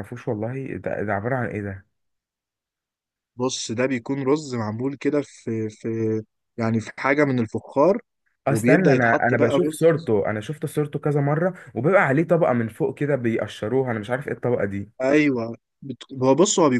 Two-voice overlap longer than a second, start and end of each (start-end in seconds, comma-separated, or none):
8.5-10.1